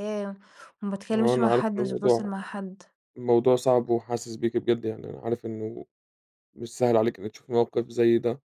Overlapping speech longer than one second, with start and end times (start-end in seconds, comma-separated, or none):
1.1-2.3